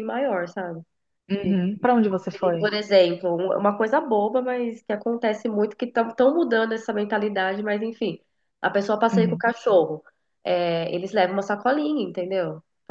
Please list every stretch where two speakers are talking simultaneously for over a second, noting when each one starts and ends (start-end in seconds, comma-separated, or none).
none